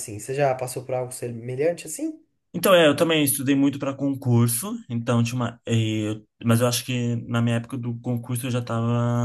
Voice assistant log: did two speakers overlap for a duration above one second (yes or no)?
no